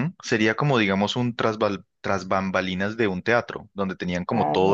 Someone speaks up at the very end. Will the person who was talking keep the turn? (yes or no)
yes